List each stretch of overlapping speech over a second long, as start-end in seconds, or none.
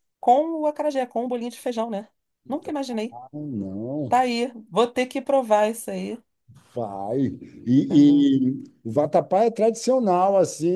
none